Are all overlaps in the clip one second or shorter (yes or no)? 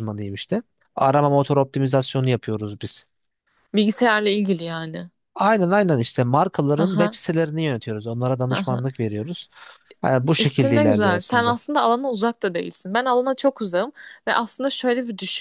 no